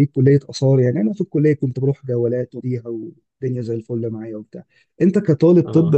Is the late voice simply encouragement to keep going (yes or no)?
yes